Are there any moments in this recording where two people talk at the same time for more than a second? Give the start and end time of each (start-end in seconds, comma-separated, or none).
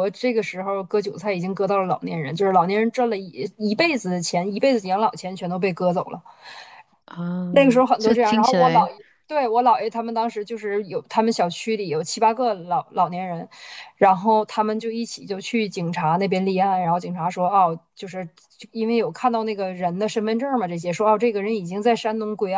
7.5-8.9